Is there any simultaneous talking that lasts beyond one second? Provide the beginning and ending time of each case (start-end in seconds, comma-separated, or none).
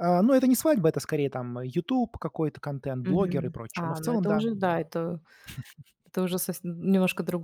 3.0-4.8